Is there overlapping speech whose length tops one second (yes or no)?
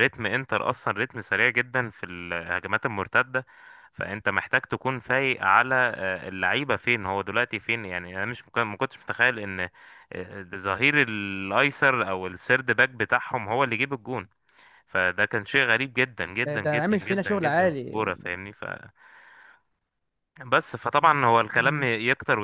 yes